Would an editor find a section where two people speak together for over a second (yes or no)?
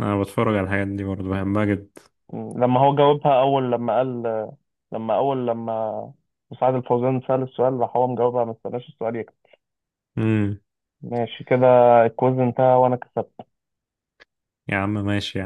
no